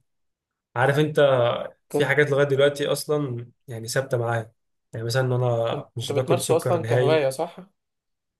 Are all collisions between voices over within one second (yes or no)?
no